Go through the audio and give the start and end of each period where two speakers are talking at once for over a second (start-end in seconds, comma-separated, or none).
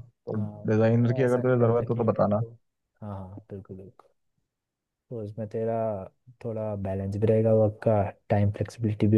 0.7-2.4